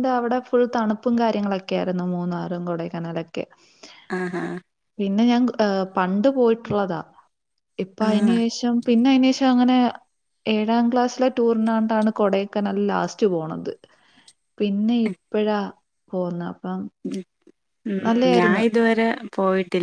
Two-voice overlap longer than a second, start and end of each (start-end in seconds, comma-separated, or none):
none